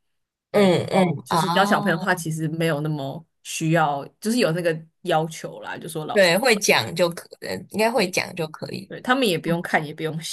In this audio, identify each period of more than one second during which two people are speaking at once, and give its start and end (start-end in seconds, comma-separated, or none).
0.5-2.2